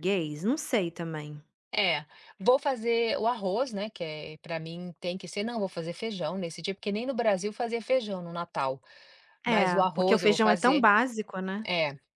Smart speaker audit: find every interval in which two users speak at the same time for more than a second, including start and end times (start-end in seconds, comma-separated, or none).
9.4-10.9